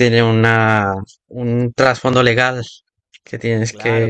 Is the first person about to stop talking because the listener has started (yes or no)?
yes